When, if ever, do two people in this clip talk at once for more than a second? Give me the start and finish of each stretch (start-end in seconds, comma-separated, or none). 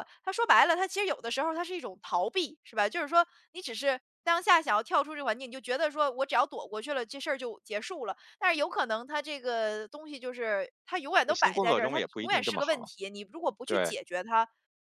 11.3-12.9